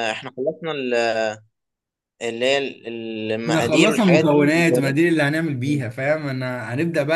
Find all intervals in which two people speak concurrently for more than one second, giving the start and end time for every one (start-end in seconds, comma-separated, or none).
3.5-5.0